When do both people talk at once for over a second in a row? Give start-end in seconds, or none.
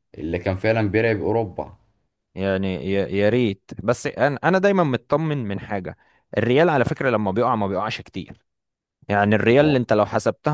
none